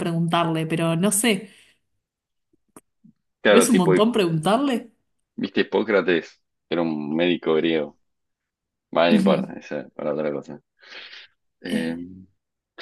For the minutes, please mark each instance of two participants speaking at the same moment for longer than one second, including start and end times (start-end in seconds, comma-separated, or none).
none